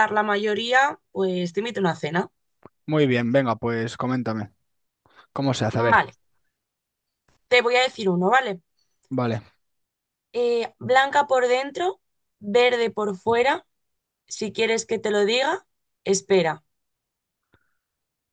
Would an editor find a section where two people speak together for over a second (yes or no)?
no